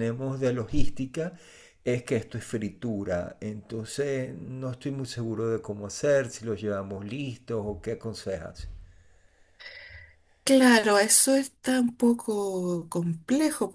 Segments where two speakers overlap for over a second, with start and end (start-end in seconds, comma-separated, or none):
none